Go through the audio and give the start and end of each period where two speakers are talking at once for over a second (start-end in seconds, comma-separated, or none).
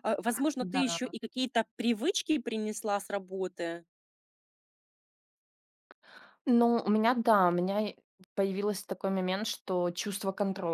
none